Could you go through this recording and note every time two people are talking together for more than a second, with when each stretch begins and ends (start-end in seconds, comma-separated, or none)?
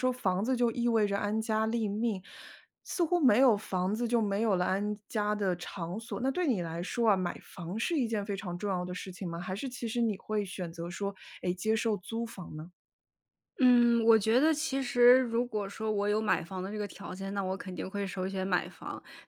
none